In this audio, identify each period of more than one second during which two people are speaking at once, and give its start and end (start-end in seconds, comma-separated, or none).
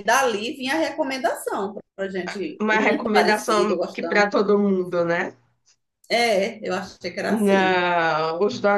2.6-4.3